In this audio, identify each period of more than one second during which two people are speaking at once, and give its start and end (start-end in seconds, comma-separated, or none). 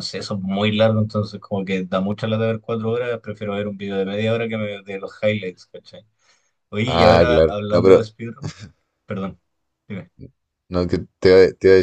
6.9-8.1